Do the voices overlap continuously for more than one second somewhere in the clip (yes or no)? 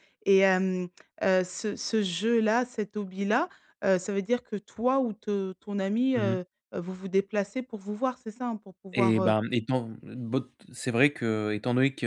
no